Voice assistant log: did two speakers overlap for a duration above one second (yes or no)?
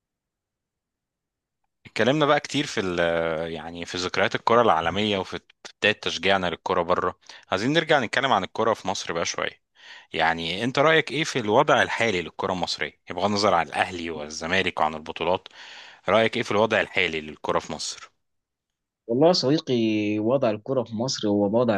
no